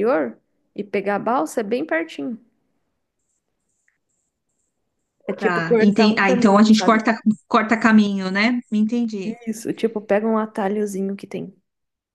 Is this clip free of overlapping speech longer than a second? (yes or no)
no